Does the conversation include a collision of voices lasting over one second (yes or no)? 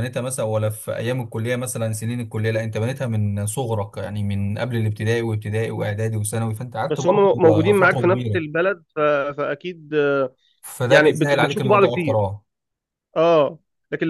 yes